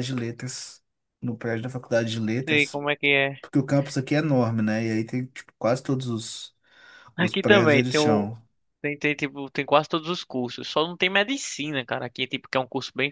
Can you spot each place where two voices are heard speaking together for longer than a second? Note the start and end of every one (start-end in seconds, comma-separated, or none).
7.2-8.4